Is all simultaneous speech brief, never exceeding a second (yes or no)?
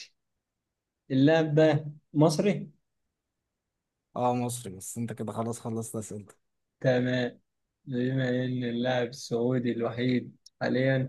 yes